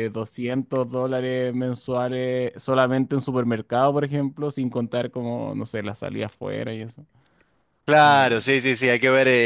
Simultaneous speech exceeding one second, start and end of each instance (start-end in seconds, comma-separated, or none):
none